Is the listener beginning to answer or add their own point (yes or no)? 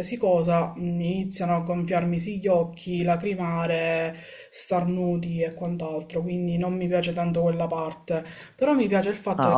yes